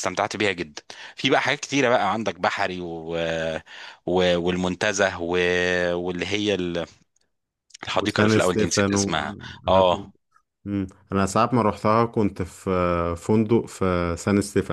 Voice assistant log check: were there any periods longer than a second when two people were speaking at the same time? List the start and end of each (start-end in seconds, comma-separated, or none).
8.0-9.8